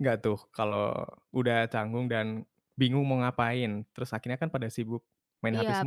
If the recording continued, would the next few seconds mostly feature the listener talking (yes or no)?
yes